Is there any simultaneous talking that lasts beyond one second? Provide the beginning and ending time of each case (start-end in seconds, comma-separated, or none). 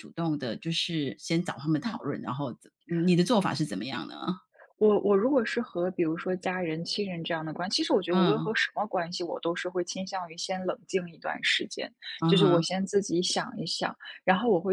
none